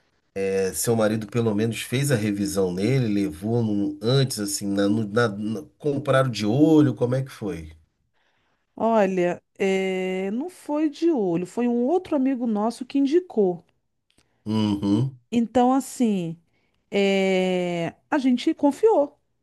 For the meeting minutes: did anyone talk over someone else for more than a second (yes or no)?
no